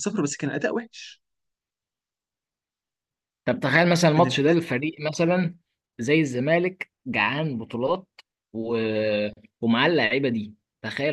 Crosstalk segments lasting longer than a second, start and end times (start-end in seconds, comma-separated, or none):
none